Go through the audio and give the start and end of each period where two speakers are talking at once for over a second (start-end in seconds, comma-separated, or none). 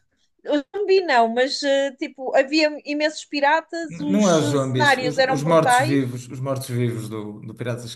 3.9-6.0